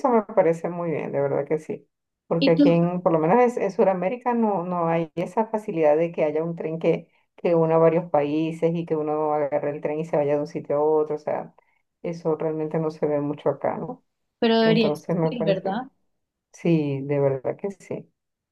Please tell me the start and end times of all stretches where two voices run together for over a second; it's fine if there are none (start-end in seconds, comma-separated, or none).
14.6-15.8